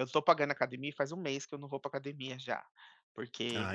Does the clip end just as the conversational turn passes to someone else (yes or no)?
no